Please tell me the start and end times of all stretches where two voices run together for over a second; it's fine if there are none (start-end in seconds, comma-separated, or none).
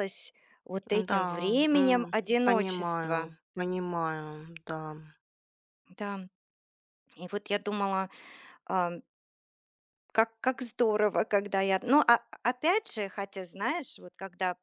1.1-3.3